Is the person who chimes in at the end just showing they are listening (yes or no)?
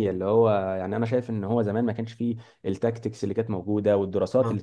yes